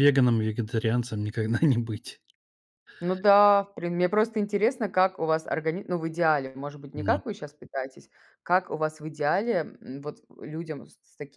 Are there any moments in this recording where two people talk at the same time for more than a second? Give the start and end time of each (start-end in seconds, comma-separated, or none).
none